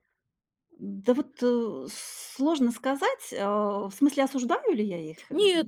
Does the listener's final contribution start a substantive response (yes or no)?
yes